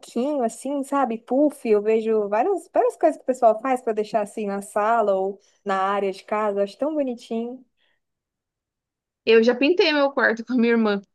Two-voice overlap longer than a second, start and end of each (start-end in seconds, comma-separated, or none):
none